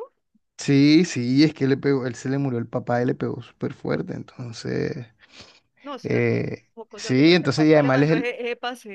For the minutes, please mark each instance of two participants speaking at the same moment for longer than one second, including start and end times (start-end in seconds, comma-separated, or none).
6.0-8.3